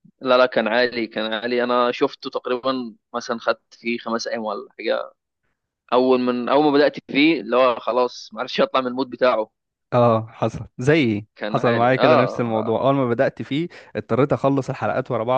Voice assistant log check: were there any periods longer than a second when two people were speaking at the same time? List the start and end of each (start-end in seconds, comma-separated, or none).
11.3-12.8